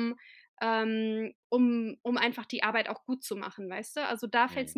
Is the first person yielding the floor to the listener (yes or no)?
no